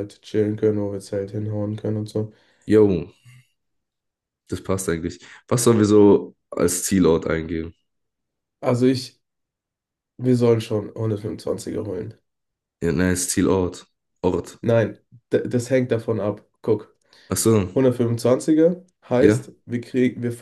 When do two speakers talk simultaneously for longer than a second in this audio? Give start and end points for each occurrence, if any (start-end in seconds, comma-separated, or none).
none